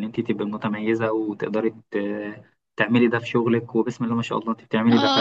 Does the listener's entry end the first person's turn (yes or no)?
yes